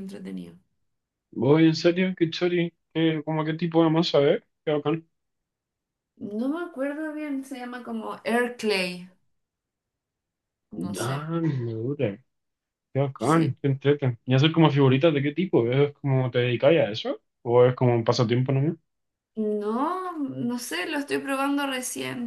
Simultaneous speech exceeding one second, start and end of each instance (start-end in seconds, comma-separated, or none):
none